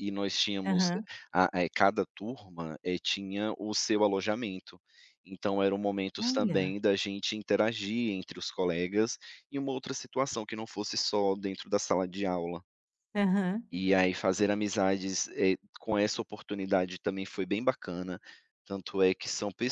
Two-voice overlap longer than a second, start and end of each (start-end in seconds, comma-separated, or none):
none